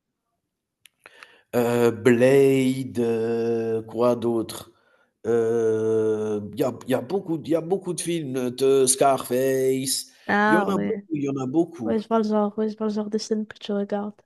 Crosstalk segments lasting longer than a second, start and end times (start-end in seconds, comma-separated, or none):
none